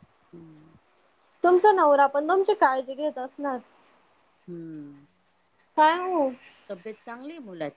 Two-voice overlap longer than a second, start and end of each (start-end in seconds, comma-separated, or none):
none